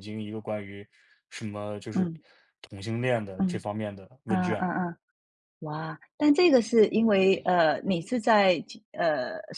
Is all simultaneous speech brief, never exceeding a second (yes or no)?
yes